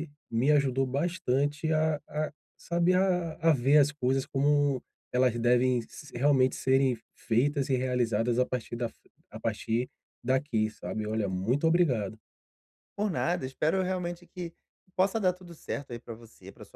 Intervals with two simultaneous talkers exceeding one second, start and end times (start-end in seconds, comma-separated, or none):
none